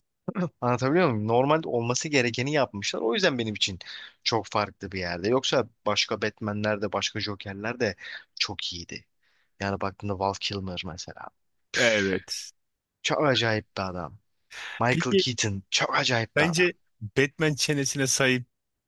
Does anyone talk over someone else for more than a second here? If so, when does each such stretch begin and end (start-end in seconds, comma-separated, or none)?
none